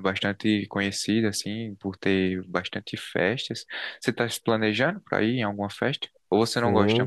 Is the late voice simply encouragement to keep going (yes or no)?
no